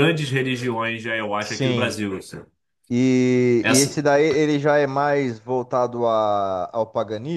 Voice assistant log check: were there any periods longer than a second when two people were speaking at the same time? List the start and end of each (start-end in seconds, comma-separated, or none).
none